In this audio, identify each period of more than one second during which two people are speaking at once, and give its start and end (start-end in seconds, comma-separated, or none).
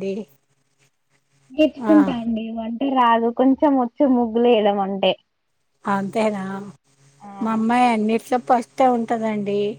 none